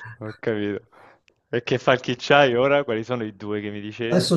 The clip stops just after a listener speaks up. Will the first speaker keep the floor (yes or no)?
no